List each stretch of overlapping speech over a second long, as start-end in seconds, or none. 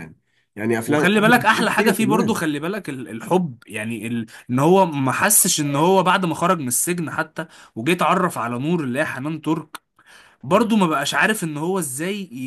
0.8-2.4